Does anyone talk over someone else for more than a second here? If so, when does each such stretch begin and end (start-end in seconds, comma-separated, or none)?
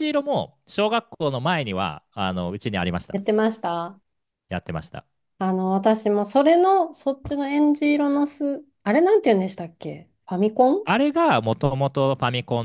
none